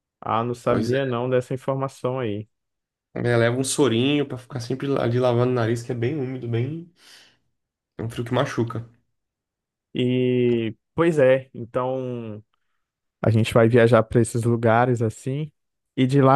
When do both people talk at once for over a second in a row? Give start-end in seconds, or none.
none